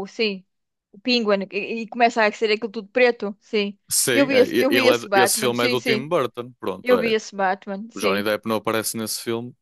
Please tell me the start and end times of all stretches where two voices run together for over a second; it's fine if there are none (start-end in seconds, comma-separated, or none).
3.9-6.1